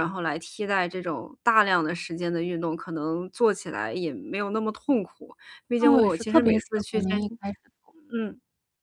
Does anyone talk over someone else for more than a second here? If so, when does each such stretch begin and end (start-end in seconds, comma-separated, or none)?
5.8-7.4